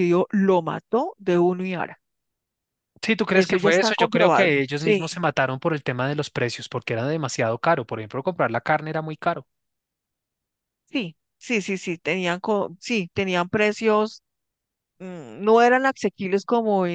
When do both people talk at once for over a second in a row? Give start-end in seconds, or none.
3.3-5.2